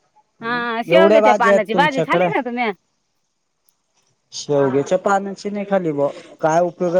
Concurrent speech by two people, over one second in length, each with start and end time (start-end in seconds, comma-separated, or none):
0.9-2.2